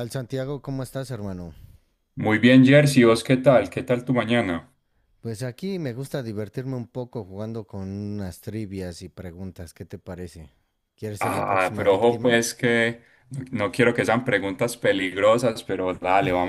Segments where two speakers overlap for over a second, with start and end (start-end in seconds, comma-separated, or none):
11.2-12.4